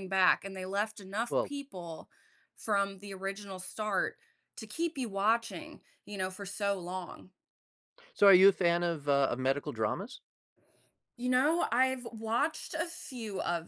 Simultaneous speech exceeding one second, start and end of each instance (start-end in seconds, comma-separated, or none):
none